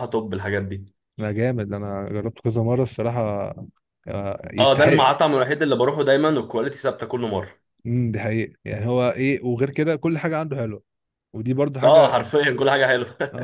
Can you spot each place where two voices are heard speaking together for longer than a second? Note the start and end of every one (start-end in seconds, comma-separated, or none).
none